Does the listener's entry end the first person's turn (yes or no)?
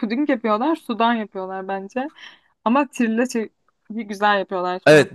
yes